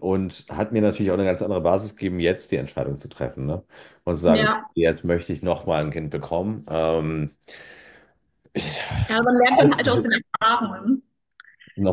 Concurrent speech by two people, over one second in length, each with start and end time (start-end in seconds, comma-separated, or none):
none